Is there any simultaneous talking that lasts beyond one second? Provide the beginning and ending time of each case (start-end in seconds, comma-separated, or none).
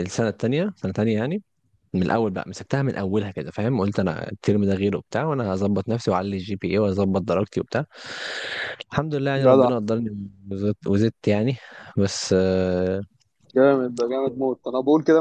none